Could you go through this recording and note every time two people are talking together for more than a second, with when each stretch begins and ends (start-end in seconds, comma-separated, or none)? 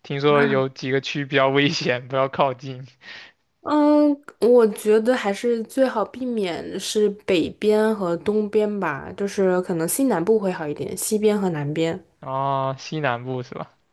none